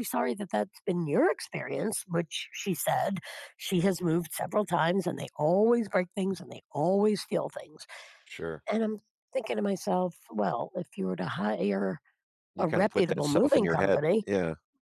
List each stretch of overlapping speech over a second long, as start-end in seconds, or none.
12.6-14.3